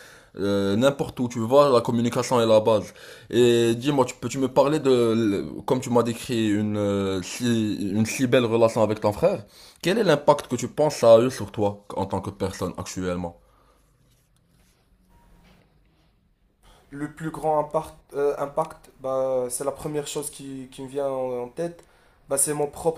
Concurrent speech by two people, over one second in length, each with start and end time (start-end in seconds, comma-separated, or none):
none